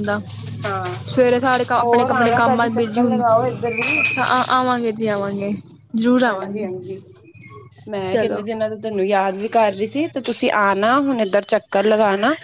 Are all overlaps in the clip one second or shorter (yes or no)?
no